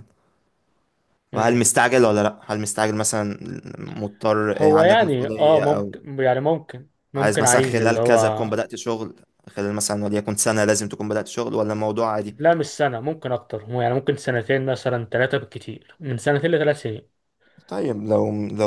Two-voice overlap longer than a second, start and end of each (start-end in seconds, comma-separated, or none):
4.6-5.9, 7.2-8.5